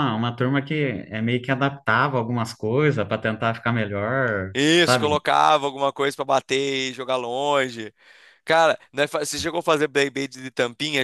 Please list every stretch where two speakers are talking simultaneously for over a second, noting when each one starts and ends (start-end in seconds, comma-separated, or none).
none